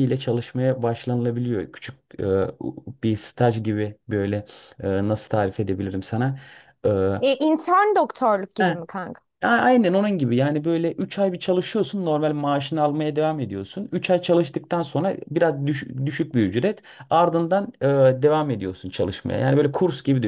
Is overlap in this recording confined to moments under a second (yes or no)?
yes